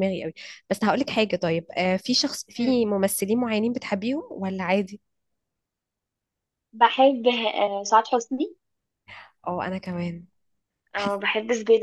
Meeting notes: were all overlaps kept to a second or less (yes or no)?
yes